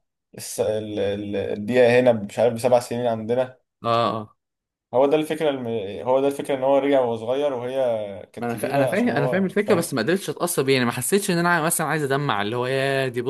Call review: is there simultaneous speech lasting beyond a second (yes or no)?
yes